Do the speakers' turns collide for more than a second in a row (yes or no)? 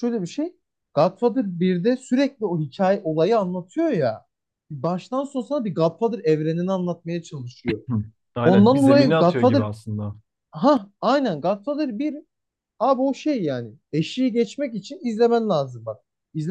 yes